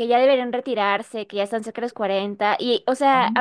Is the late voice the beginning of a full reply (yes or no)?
no